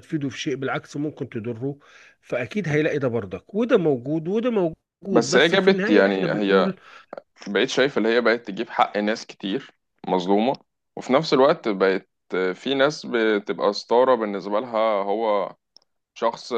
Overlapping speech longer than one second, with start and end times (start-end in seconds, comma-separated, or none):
5.1-6.8